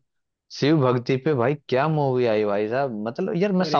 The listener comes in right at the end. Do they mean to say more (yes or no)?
no